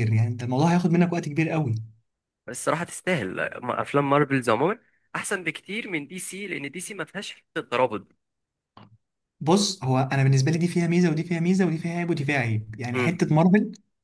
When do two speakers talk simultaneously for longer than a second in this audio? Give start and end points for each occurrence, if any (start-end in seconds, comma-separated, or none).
none